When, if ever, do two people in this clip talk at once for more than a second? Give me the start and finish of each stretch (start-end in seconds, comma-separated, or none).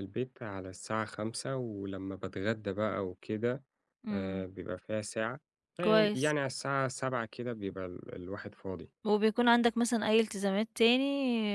none